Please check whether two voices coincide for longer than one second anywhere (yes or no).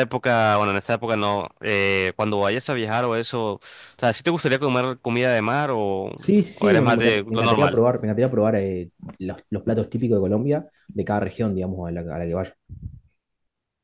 yes